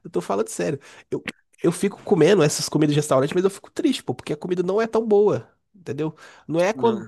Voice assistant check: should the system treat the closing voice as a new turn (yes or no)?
no